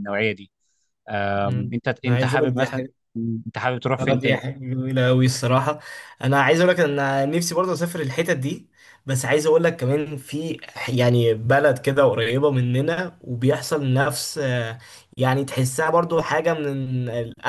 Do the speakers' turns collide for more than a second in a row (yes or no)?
yes